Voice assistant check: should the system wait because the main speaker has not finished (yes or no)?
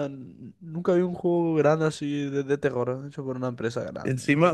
no